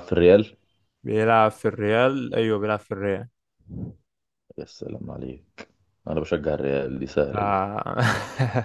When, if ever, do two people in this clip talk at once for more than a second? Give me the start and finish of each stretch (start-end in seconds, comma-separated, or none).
none